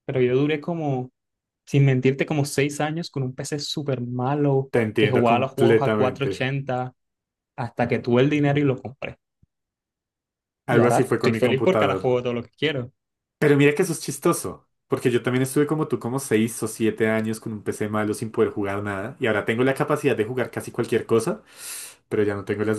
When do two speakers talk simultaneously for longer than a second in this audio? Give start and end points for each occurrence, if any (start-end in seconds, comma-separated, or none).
4.7-6.5, 10.7-12.2